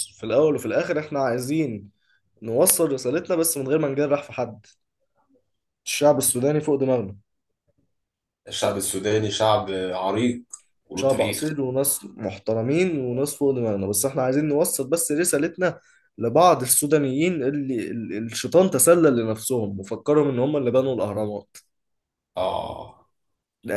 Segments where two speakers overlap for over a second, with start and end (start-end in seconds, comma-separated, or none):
none